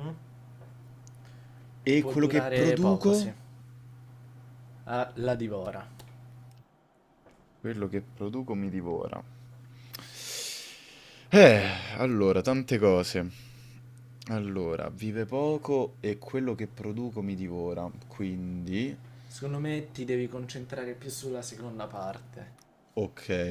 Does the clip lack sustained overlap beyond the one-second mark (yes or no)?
no